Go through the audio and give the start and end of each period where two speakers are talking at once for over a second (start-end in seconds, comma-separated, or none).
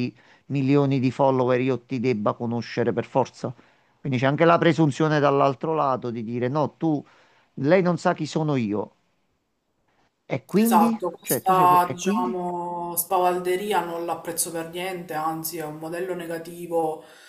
10.6-12.4